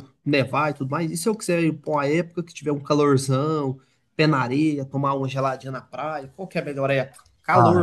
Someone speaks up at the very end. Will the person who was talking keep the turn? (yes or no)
no